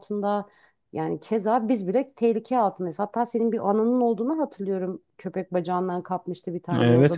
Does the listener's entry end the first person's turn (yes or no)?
yes